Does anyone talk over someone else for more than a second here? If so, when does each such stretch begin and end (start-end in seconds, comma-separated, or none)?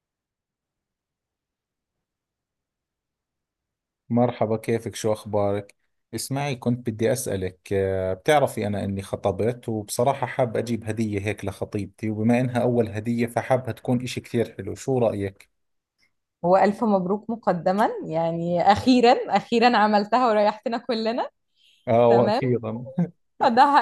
none